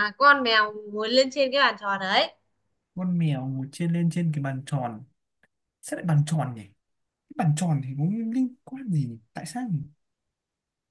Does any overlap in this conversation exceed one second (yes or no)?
no